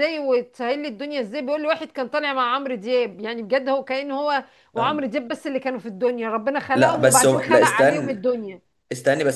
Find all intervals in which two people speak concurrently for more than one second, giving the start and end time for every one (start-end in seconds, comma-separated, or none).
6.7-8.2